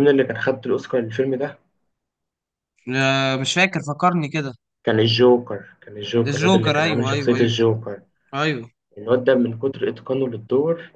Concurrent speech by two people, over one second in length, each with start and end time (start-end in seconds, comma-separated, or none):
6.2-7.6